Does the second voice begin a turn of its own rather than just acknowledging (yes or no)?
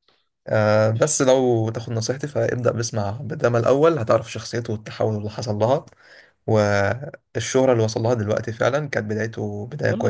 yes